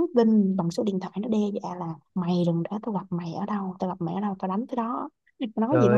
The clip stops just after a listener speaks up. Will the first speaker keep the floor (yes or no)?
no